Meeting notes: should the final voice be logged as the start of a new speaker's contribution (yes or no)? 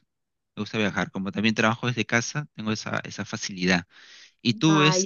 no